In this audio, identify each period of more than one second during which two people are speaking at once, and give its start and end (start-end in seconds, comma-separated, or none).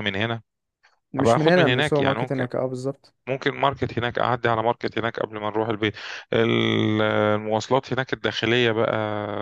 1.2-2.5